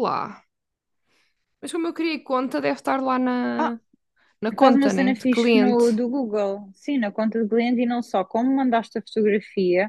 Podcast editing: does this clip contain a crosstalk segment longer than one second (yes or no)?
yes